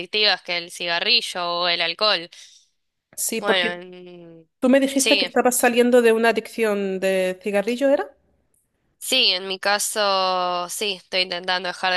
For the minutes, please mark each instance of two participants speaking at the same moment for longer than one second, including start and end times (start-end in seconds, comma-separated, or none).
none